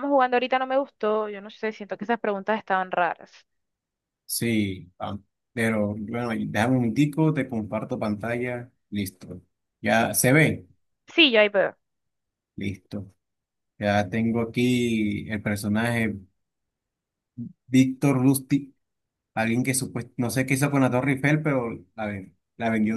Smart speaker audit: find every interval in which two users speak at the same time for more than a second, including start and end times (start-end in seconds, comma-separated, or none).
none